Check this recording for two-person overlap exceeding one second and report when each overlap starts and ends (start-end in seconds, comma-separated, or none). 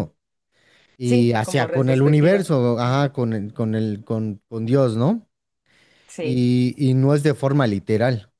1.0-2.9